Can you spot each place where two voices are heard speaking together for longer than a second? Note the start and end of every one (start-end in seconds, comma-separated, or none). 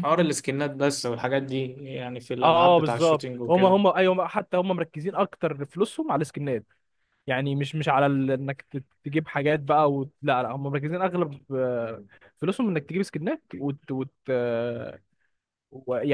2.4-3.8